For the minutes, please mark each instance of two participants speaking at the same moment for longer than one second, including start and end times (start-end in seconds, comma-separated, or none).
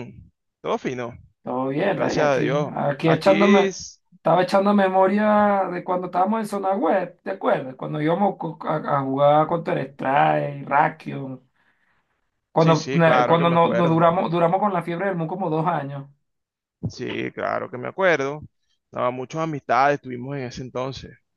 1.9-3.7, 12.6-14.0